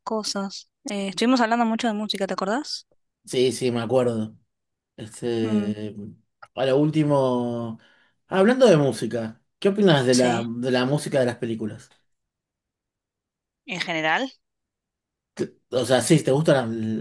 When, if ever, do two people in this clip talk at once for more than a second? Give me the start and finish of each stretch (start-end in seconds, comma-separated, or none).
none